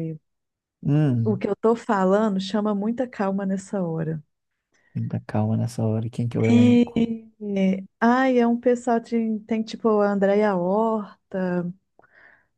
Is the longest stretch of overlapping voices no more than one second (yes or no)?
yes